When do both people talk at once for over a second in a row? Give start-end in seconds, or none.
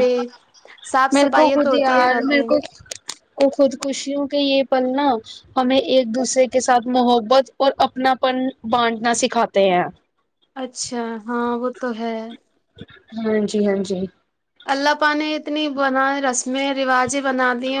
1.1-2.5